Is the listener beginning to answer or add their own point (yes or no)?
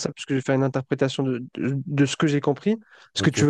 no